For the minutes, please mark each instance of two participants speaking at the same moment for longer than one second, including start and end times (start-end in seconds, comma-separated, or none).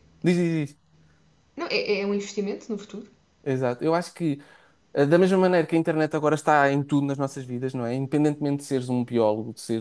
none